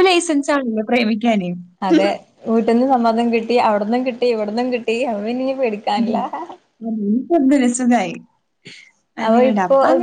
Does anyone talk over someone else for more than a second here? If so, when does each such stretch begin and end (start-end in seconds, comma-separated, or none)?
none